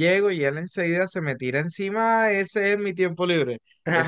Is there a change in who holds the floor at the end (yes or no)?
yes